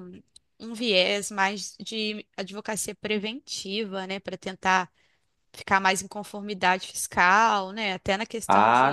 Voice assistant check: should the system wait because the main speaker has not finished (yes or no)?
no